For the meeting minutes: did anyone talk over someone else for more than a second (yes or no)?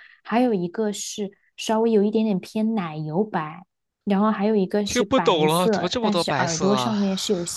yes